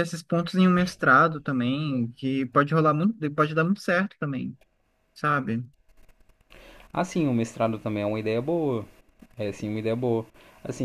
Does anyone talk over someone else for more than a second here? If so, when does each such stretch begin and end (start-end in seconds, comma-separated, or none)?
none